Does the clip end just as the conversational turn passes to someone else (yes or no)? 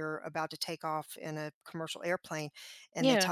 no